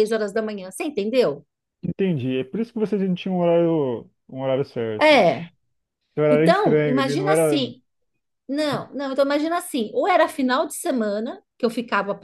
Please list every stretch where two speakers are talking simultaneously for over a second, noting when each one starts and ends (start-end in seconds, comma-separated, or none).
6.3-7.6